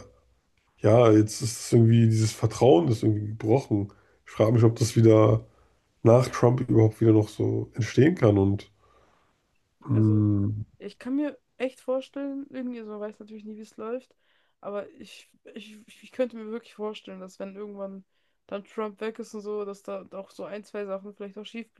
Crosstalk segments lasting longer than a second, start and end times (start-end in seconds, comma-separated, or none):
none